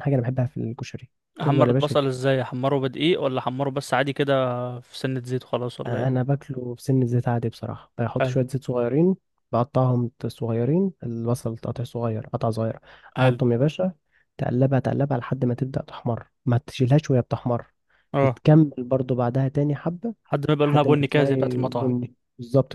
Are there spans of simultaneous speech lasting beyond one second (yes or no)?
yes